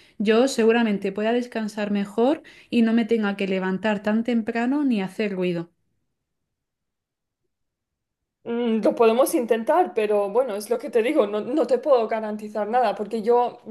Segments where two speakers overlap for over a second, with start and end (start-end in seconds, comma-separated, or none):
none